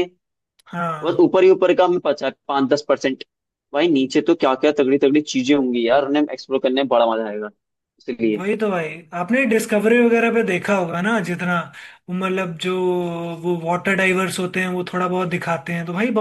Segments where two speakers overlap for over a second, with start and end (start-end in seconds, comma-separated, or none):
none